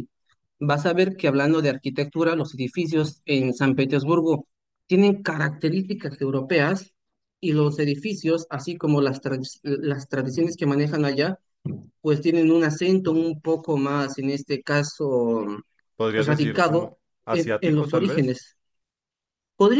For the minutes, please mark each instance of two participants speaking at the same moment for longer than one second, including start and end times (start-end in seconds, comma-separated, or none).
16.2-18.4